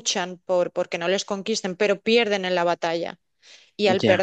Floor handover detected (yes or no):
no